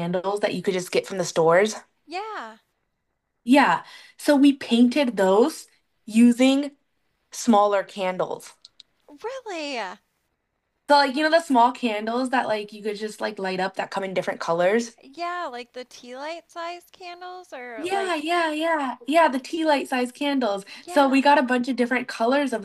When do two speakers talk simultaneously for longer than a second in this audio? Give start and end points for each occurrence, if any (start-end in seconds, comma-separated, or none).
none